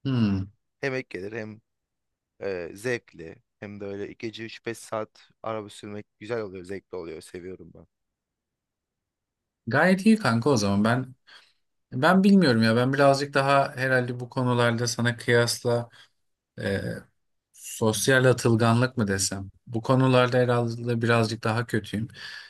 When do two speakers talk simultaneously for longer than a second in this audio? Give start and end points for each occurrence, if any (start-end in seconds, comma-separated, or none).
none